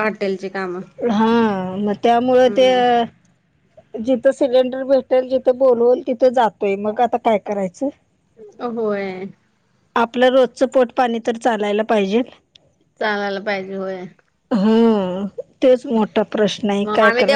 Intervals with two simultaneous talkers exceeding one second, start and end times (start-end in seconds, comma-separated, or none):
none